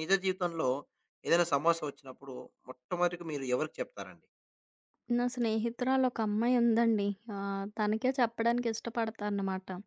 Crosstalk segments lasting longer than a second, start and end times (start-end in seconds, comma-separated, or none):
none